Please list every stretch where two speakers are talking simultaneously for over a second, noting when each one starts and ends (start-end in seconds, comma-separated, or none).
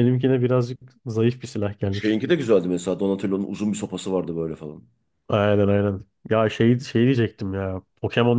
none